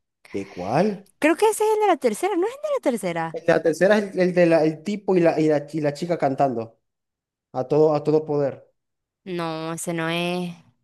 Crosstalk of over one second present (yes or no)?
no